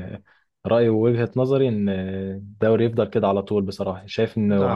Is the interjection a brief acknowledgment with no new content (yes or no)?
yes